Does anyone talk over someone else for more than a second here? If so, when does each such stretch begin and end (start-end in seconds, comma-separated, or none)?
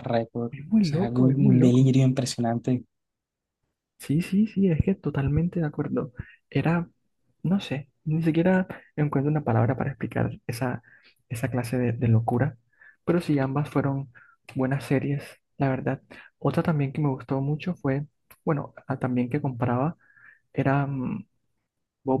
0.5-1.9